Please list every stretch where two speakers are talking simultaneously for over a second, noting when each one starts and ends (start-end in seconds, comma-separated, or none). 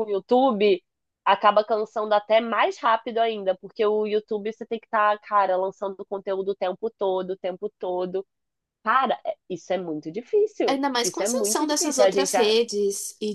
10.7-12.6